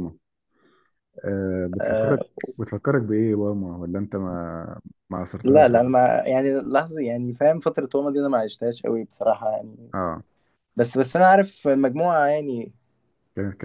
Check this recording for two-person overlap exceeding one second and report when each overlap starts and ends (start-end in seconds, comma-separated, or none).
none